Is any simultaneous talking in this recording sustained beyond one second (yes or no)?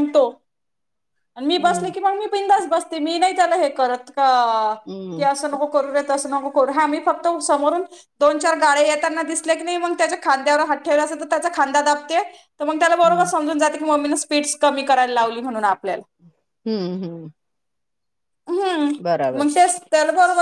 no